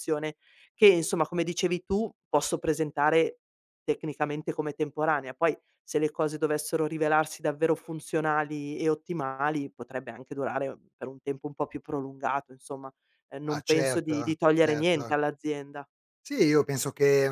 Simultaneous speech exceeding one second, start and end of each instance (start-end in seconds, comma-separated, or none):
13.5-15.1